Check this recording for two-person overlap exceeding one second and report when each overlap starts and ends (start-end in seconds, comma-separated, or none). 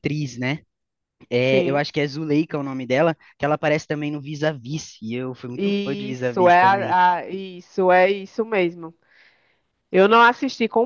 5.5-7.0